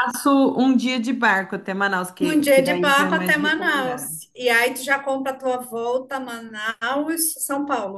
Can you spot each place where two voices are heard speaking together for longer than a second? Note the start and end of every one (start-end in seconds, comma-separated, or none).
2.2-4.1